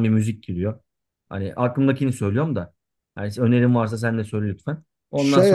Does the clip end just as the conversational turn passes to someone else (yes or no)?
yes